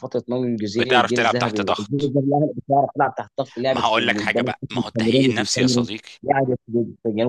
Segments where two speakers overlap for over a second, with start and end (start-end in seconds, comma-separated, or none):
0.8-2.1, 3.7-5.9